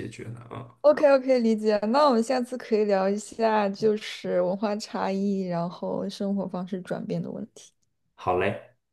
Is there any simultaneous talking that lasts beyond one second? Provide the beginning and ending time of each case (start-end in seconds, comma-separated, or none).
none